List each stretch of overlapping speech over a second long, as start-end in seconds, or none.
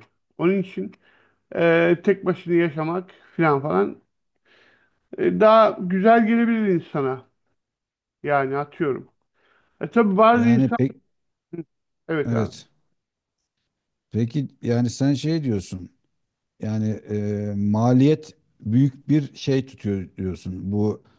none